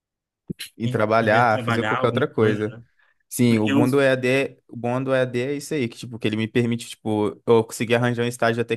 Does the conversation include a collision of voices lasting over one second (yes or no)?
yes